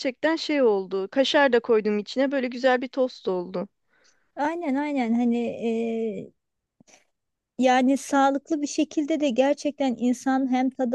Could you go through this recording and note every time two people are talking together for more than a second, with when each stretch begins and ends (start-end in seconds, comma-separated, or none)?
none